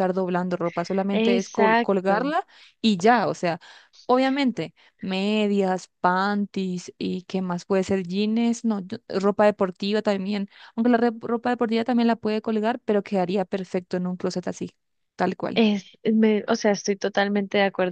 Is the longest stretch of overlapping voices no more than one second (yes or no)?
no